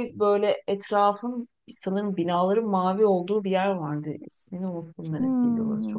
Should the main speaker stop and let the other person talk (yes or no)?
yes